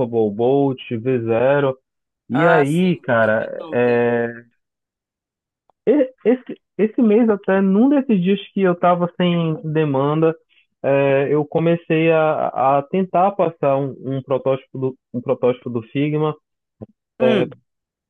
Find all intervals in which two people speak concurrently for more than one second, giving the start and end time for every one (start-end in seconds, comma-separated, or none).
2.3-4.1